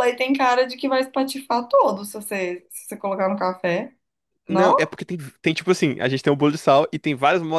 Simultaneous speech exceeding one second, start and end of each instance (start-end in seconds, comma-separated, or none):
none